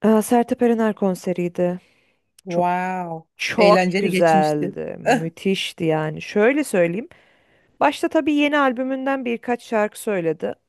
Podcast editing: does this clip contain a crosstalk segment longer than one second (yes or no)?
yes